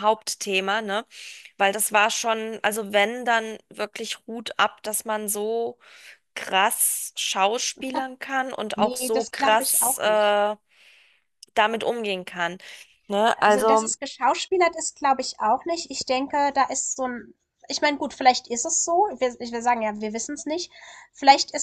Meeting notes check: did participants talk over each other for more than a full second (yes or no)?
yes